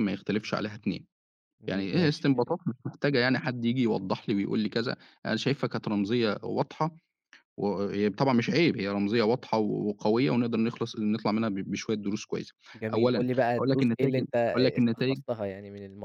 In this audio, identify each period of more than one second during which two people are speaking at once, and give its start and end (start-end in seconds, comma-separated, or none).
12.9-15.2